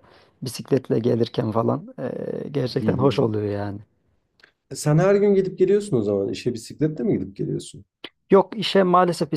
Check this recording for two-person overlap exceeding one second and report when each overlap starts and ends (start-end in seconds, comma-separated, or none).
none